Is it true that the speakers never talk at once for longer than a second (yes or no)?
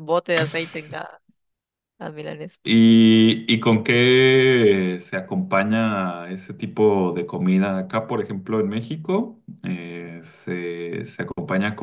yes